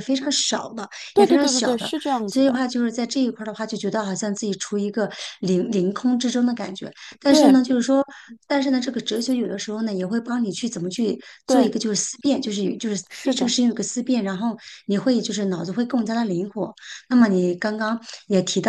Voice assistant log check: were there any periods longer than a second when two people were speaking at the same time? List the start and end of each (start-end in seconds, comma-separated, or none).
1.1-2.6